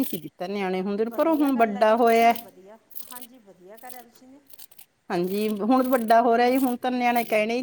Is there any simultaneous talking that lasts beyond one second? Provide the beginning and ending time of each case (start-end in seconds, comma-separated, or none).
1.1-2.3